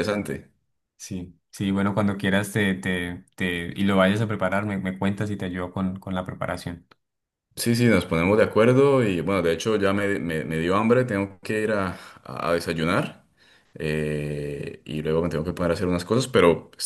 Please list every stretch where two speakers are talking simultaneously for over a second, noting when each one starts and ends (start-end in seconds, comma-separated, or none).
none